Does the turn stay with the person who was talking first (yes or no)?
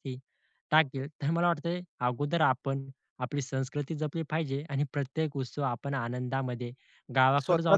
yes